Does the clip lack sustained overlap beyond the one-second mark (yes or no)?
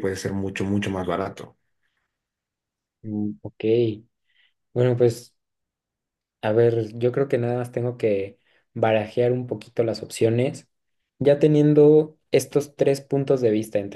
yes